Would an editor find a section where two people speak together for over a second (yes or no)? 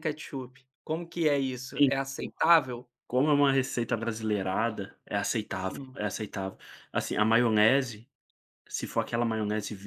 no